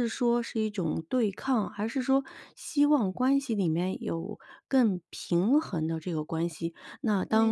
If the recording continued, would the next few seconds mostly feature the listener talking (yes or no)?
no